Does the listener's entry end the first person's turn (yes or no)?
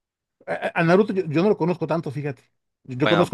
no